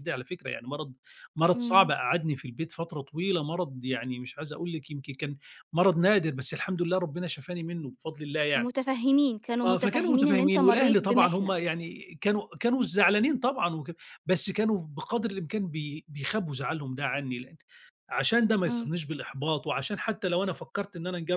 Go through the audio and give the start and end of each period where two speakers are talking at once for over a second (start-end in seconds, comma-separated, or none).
9.7-11.5